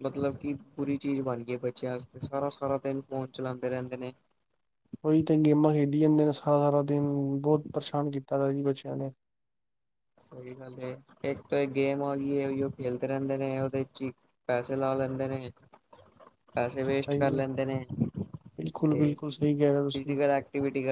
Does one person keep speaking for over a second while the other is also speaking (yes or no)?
yes